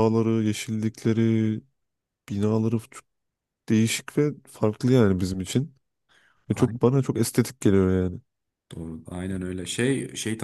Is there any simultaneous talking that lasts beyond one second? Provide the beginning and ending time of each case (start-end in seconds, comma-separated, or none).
none